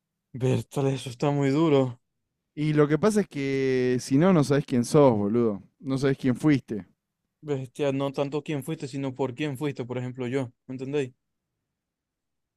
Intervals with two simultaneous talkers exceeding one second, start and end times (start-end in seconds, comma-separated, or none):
none